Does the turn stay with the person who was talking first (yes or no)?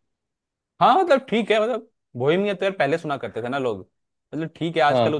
yes